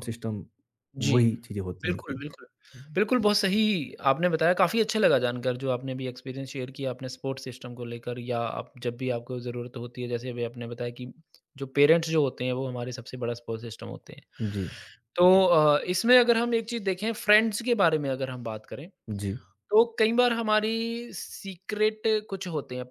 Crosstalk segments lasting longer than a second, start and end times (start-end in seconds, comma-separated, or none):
none